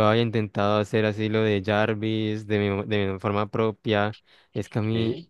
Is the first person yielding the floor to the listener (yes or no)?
no